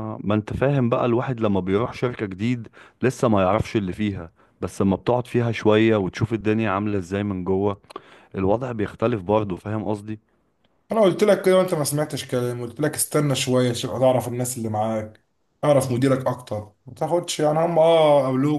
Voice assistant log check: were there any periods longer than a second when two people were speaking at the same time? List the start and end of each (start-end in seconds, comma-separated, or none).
none